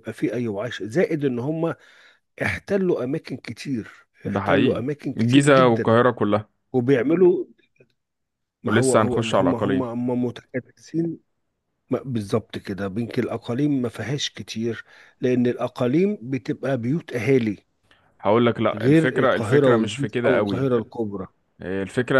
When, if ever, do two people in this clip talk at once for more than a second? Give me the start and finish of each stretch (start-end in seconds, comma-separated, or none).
4.3-6.0, 8.7-9.9, 18.7-20.6